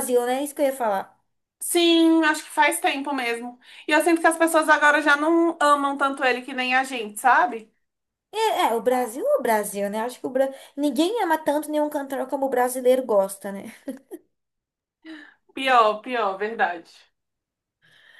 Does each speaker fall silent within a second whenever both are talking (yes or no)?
yes